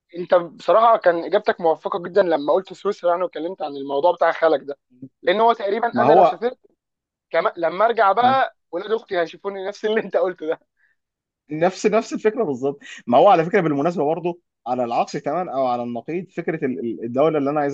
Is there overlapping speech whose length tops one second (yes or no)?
no